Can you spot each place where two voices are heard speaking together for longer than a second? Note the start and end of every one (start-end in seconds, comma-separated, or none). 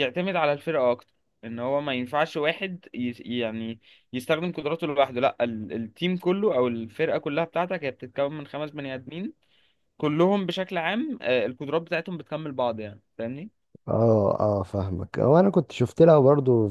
none